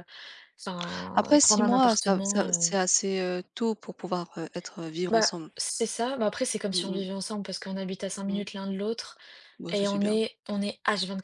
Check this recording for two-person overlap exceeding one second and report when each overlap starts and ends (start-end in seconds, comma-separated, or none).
1.2-2.7